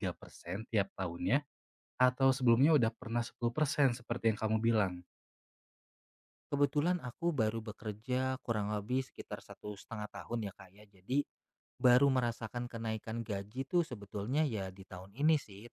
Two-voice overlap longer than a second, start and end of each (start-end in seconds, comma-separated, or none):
none